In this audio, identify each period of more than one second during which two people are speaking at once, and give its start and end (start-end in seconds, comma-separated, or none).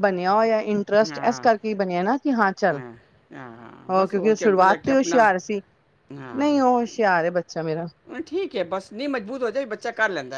3.9-5.3